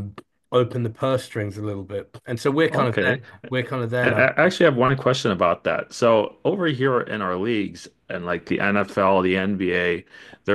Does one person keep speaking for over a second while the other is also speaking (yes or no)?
no